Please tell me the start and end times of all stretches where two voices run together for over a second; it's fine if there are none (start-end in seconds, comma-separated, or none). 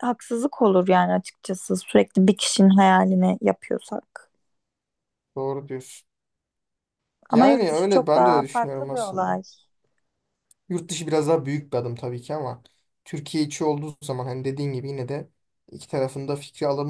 7.3-9.4